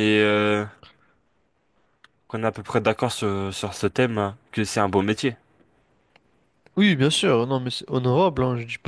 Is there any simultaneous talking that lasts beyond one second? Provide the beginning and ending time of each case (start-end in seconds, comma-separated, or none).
none